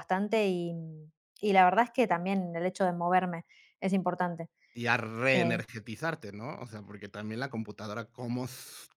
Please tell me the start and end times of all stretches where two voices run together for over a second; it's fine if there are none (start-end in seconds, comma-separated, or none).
none